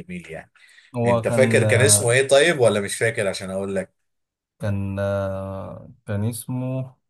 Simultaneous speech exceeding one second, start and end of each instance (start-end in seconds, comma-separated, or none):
none